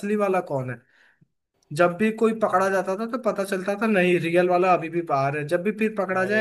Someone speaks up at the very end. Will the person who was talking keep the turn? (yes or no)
yes